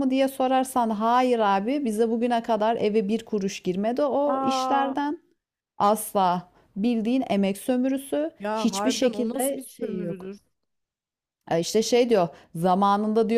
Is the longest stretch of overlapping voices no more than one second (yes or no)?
no